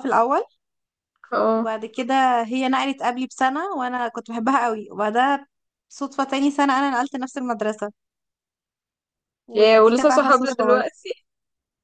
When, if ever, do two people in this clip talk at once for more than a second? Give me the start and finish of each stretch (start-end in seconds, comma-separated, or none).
9.5-10.9